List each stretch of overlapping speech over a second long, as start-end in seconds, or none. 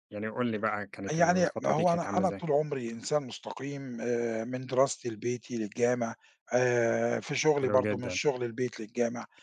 1.1-2.4